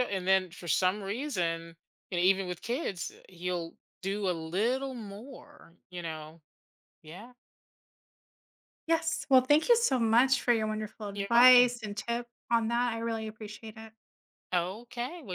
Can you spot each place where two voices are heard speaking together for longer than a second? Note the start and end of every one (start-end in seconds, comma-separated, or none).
none